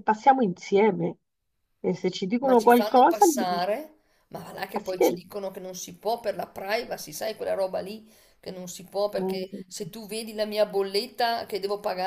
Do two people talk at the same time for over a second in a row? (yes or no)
yes